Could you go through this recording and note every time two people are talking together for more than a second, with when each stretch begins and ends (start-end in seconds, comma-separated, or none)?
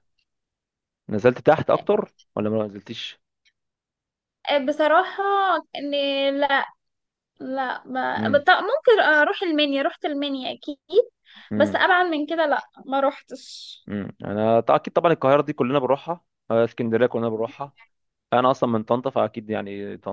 none